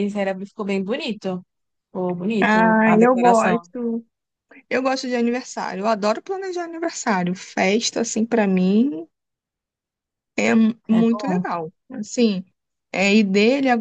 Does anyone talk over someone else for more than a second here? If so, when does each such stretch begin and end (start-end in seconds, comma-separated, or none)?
2.4-3.7